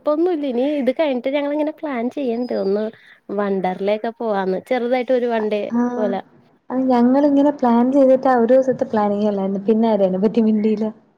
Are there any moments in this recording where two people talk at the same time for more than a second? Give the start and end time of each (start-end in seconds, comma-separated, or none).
none